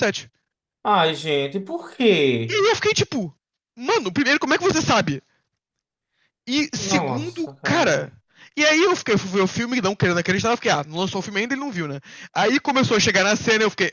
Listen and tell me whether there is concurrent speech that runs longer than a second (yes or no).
yes